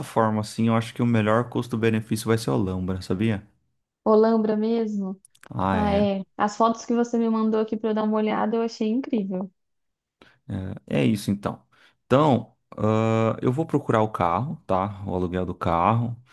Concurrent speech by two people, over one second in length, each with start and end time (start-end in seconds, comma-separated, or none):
none